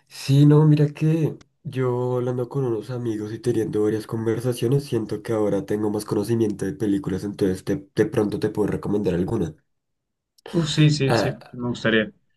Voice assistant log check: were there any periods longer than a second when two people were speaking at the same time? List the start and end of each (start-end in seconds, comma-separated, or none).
none